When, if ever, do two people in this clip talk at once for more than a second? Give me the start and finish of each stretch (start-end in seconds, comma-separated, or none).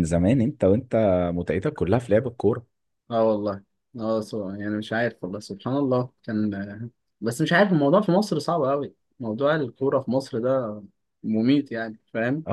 none